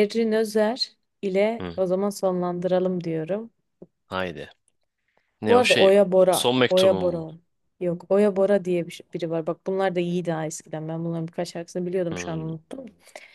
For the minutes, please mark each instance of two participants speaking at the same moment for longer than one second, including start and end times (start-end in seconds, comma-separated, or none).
5.5-7.3